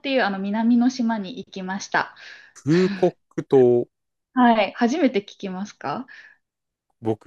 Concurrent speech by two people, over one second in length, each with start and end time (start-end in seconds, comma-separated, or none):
none